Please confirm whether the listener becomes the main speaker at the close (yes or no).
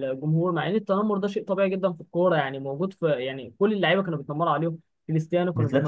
no